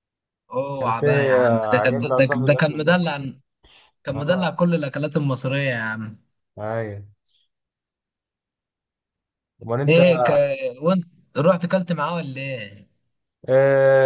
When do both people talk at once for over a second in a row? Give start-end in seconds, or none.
0.8-3.1